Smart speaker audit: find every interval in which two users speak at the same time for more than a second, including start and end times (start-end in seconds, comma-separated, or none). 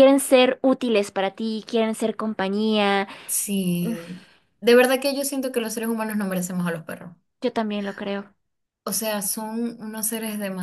none